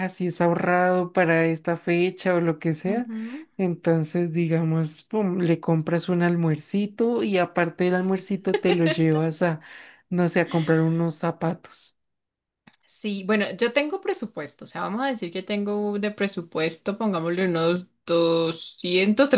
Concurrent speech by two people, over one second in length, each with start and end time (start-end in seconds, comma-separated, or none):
none